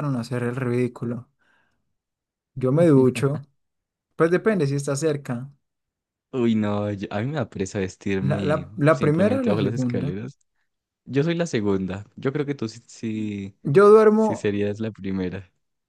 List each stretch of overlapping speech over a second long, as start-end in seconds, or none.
8.3-10.2